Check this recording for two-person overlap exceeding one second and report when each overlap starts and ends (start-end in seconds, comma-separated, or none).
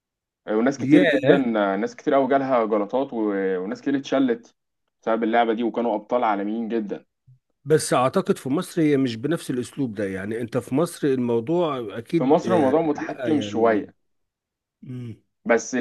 12.1-13.9